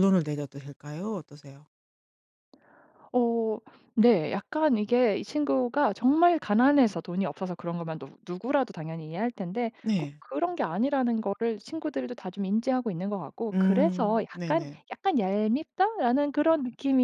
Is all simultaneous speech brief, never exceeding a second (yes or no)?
no